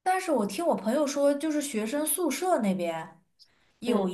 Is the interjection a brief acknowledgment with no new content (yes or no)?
yes